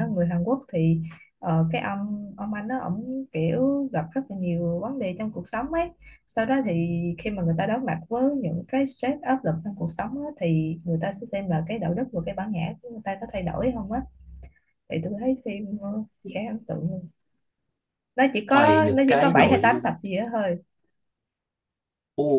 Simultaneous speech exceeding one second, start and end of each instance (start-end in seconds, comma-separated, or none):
18.5-19.9